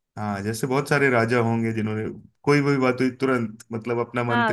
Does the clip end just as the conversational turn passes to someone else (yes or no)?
yes